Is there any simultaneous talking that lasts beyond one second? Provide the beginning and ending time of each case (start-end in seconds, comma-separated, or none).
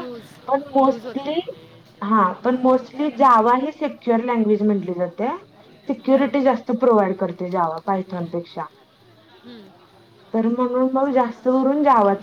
2.0-3.5